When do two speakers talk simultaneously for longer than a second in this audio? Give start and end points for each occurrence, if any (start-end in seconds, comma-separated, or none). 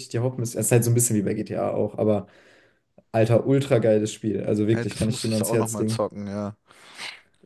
4.7-6.0